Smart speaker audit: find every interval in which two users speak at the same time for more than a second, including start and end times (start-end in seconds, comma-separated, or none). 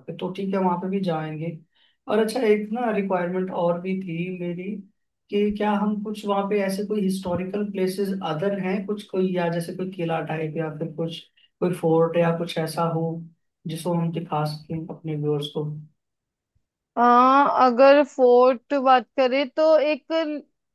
none